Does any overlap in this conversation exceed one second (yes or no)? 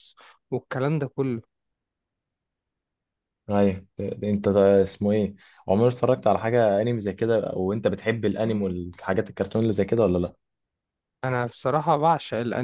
no